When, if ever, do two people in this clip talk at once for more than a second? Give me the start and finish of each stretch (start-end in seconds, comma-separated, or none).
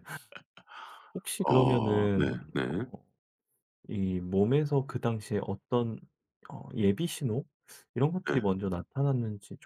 1.4-2.9